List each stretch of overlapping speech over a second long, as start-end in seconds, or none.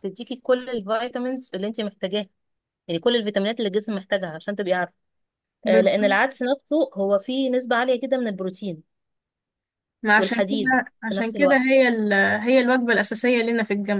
10.2-11.6